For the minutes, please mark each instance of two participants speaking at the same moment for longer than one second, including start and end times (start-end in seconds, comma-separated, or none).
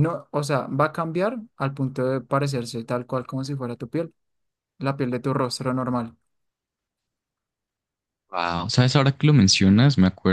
none